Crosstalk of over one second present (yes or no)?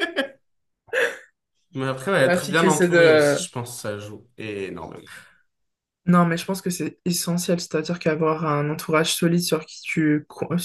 yes